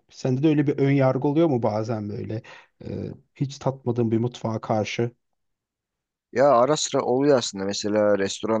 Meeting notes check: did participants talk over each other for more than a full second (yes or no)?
no